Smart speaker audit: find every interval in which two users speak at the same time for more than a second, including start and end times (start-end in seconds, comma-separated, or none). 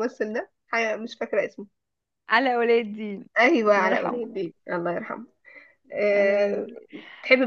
none